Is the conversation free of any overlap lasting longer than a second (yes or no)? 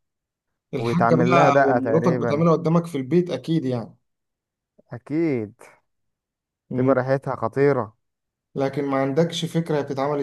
no